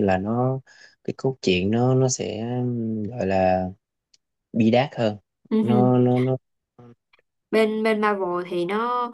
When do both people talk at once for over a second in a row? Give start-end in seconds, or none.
none